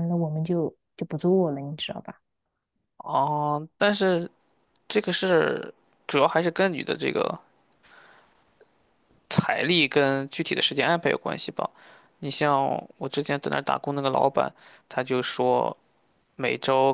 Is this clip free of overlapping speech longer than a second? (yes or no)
yes